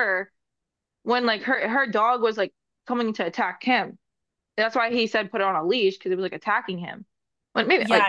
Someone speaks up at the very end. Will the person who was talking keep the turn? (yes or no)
no